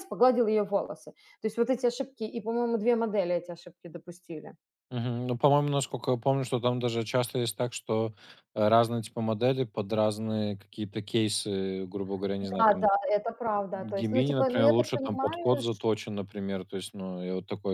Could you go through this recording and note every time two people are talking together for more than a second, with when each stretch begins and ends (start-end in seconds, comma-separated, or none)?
13.7-15.8